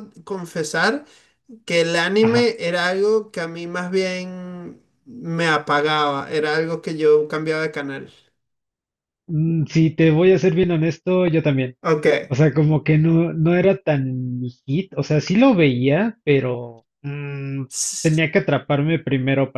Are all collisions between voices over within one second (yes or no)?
yes